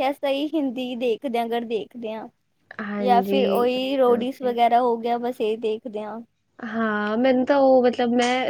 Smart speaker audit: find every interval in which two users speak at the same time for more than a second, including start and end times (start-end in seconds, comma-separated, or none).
3.0-4.6